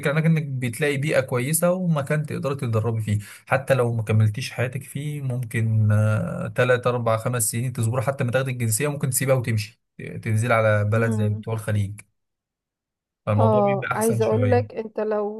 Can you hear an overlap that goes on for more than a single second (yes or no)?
yes